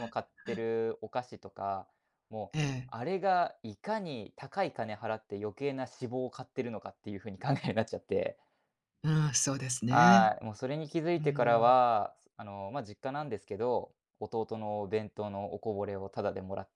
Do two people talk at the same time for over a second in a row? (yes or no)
no